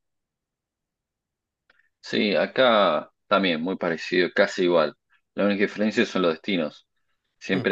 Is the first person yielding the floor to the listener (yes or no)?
no